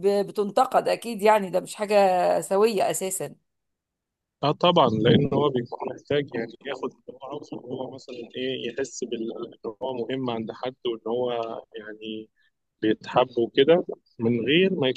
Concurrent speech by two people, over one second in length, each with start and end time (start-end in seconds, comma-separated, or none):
none